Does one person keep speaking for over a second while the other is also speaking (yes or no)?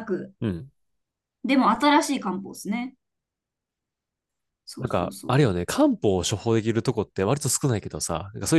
no